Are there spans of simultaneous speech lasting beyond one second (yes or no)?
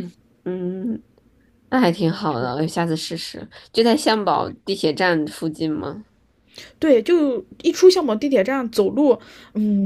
no